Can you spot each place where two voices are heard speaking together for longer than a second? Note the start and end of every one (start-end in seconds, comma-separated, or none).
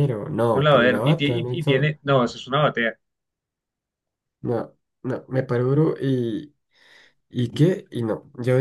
0.5-1.9